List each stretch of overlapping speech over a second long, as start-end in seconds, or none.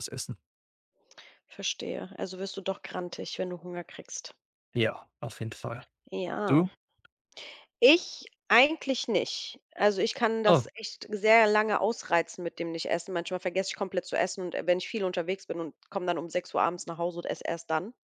none